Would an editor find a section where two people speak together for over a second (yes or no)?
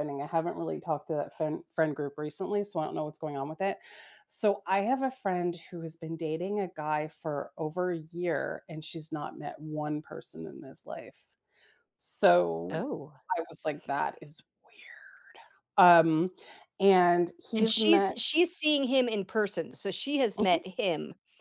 no